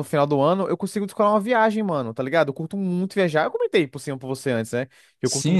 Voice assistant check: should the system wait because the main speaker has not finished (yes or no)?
no